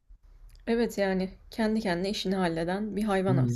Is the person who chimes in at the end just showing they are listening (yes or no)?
no